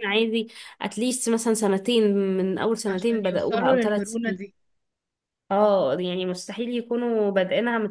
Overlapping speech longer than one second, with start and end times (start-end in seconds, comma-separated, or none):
2.9-4.4